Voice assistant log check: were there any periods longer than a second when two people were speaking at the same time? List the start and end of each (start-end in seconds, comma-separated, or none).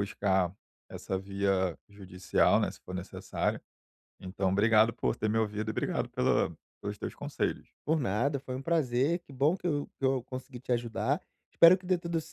none